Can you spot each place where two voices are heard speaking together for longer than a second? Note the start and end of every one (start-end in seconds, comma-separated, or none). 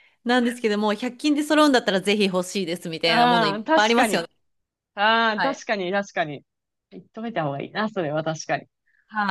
3.0-4.3